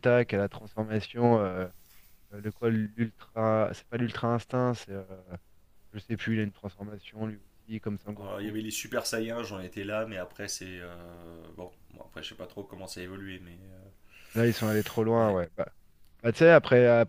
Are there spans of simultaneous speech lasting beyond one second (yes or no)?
no